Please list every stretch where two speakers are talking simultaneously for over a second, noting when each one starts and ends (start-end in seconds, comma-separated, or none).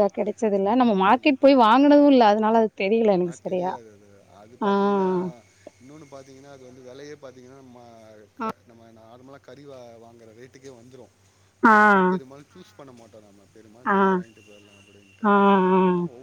none